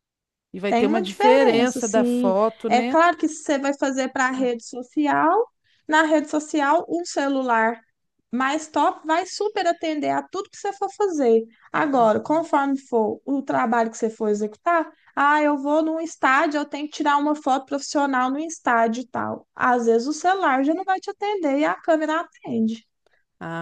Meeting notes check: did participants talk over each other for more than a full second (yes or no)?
yes